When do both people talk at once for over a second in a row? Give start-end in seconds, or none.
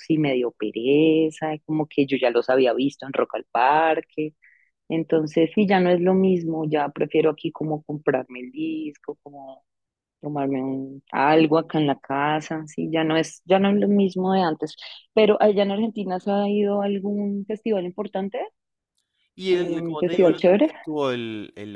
19.5-20.7